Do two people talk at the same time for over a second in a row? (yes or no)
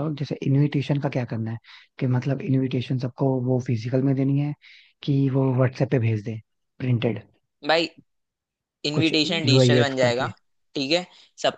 yes